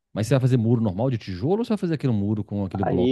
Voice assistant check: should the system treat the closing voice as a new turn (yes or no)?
yes